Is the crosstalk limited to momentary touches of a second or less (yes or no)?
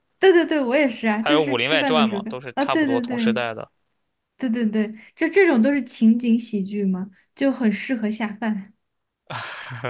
no